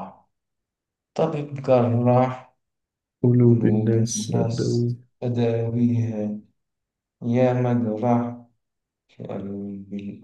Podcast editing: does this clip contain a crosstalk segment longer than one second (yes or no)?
yes